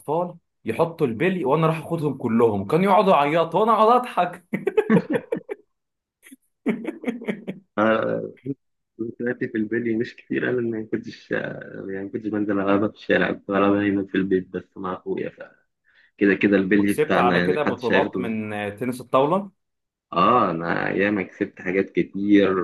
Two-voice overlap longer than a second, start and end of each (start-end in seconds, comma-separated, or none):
16.8-18.4